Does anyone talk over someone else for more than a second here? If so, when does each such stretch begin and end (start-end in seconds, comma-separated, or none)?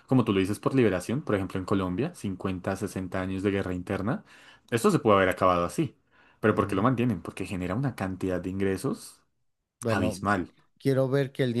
none